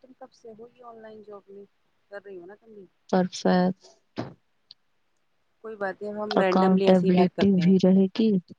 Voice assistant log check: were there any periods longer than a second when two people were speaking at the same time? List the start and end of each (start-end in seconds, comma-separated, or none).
6.4-8.0